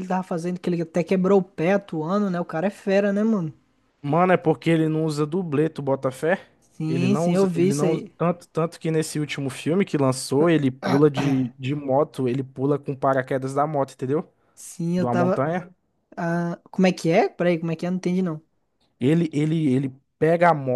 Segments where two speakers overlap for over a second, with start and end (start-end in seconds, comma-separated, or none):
6.9-8.1